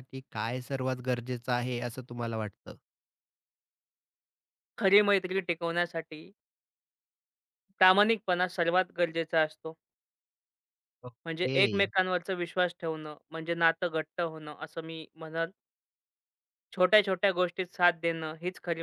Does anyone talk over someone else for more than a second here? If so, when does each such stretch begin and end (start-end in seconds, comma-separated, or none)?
none